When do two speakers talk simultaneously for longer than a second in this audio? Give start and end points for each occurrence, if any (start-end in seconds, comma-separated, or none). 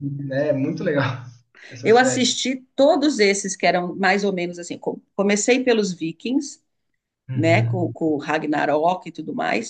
none